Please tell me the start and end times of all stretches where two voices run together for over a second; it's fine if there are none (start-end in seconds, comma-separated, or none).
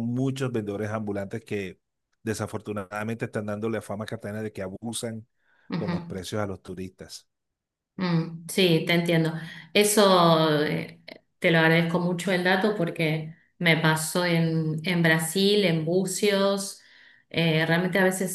none